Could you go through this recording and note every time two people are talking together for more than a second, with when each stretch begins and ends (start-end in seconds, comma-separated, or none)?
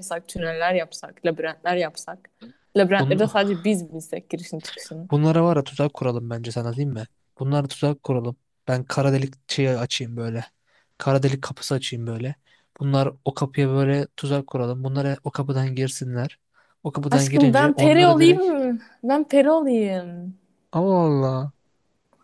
17.1-18.4